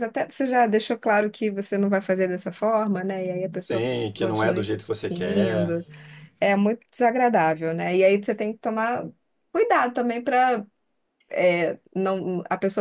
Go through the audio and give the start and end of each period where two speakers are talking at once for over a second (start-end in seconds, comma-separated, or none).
3.4-5.7